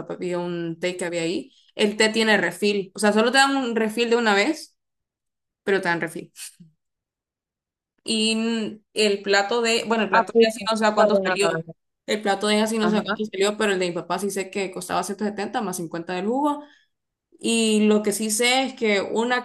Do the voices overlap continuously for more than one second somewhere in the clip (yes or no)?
yes